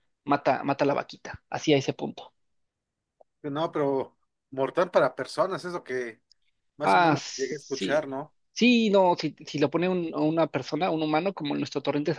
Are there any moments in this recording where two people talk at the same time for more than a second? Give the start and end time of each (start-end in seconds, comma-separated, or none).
6.8-8.1